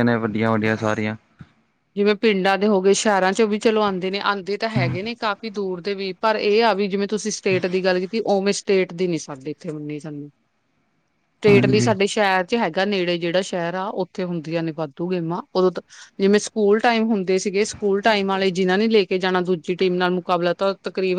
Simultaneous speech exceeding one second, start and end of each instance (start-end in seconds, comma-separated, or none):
none